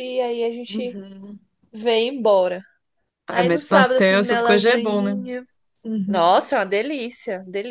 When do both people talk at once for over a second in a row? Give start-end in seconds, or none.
3.3-5.2